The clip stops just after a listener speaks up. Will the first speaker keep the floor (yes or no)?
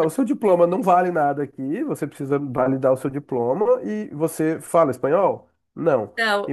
yes